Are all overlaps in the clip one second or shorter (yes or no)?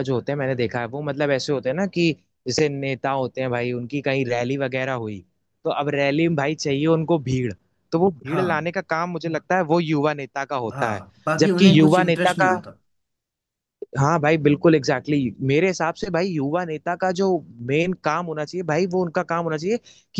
no